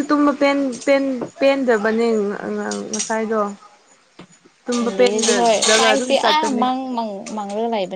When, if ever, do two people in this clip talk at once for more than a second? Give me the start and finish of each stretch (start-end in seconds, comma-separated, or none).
4.8-6.6